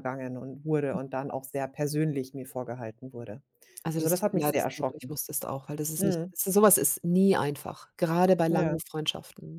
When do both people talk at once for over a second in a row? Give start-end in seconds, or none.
3.9-5.2